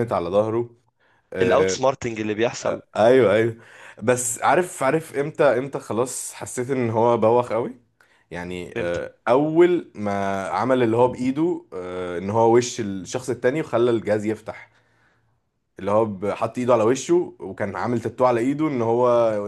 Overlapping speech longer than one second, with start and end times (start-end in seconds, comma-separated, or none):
none